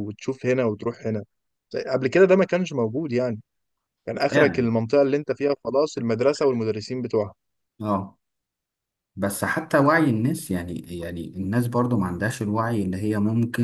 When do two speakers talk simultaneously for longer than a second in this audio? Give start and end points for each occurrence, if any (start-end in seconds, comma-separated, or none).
none